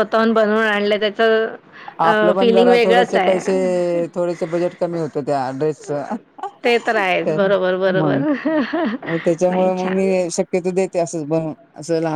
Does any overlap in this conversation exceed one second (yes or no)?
yes